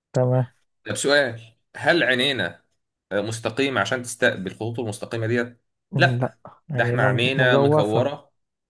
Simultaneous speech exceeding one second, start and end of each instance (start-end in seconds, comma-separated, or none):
6.0-8.1